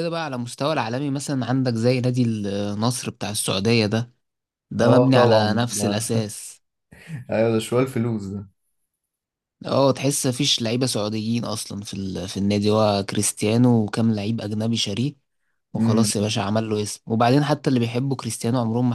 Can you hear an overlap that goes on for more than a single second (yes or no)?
yes